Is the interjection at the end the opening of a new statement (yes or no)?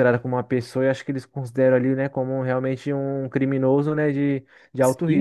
yes